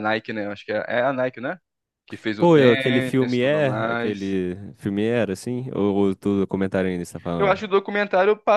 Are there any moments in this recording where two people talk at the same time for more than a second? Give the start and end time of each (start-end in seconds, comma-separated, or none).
2.4-4.3